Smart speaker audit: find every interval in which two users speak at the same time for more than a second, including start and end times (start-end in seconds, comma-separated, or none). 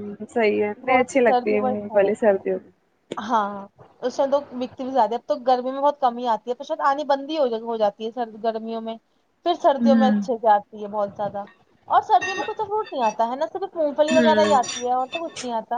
0.9-2.4